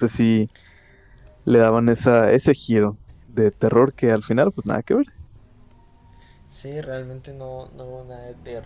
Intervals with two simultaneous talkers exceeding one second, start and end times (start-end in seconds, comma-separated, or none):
none